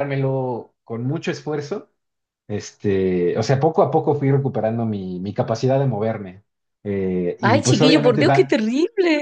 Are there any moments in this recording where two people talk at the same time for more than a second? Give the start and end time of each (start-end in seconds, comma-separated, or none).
7.4-8.6